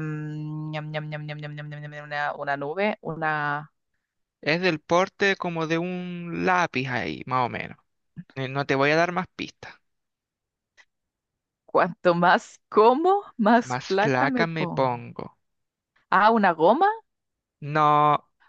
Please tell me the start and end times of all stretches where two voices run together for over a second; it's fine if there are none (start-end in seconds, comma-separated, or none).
13.6-14.9